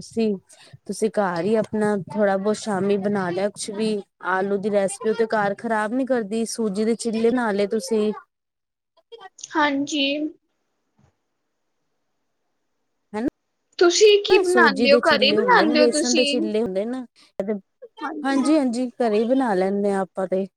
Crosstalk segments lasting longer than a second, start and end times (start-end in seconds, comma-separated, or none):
14.3-16.5